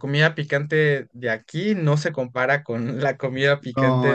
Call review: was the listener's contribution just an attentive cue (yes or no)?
no